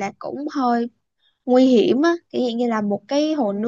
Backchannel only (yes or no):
yes